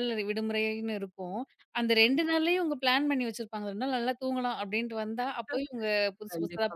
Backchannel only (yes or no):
no